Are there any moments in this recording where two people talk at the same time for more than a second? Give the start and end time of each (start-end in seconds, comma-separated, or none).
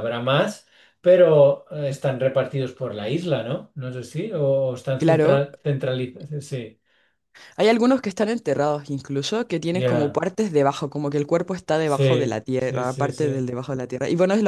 11.8-13.5